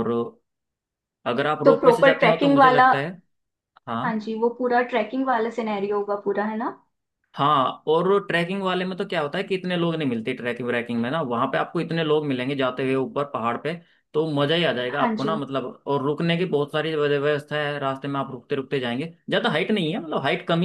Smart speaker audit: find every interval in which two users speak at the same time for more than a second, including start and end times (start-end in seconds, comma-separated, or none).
1.6-2.9